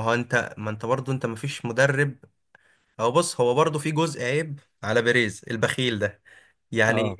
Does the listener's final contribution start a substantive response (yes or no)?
no